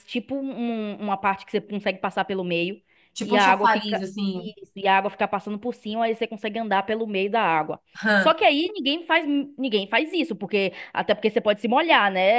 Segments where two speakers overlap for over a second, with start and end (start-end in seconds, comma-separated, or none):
3.2-4.5